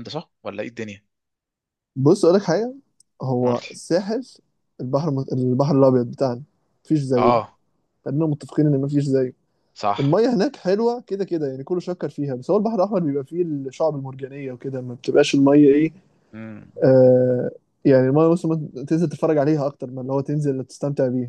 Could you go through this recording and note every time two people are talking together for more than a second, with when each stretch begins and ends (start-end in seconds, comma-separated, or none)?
none